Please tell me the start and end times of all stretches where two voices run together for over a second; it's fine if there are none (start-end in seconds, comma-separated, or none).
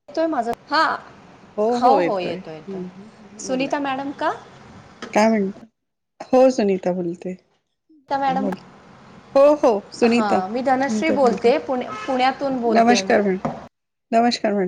none